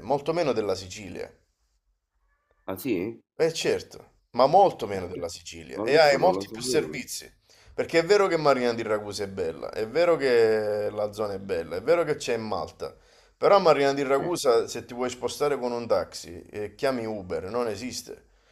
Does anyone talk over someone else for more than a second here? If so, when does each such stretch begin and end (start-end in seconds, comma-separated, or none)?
5.8-7.0